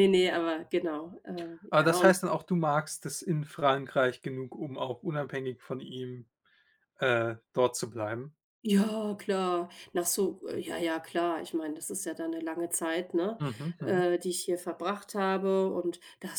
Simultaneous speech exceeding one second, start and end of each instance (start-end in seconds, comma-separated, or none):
none